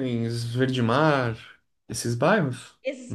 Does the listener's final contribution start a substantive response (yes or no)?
yes